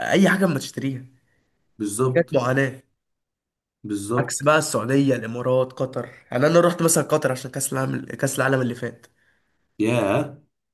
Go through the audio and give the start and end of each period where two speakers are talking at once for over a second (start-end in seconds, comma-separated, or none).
none